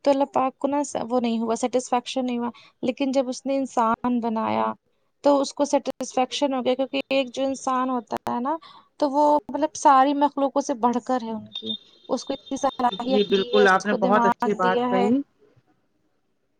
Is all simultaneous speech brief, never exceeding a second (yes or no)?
no